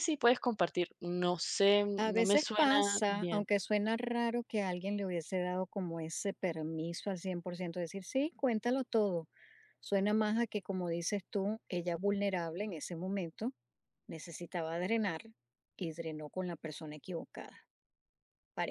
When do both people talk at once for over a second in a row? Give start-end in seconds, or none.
2.0-3.4